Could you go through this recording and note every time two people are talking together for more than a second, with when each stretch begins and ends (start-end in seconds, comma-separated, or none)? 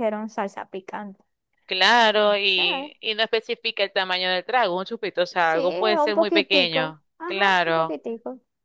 5.4-8.0